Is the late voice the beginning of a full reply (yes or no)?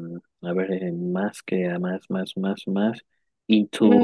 no